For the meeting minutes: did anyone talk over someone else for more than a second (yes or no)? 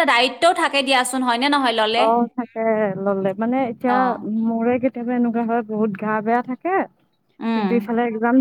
no